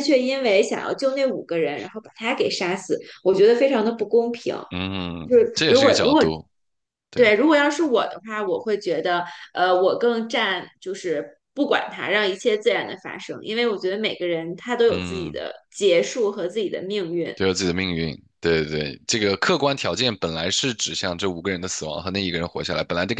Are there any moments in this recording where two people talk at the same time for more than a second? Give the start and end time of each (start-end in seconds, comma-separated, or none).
none